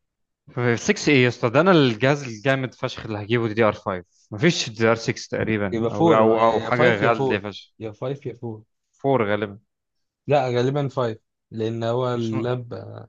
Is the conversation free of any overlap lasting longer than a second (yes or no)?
no